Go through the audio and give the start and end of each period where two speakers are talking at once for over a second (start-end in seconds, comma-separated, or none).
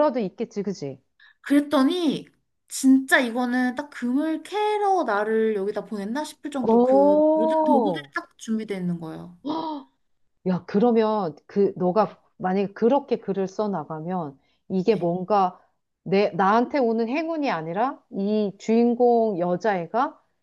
6.6-8.1